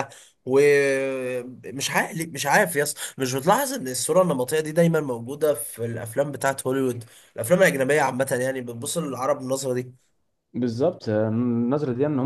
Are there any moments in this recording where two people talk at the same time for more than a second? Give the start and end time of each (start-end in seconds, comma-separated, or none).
none